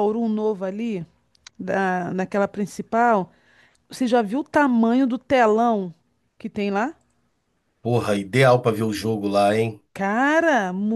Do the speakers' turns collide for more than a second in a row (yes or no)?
no